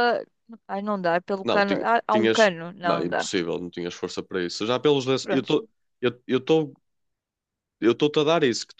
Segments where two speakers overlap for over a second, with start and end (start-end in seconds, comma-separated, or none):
1.4-3.3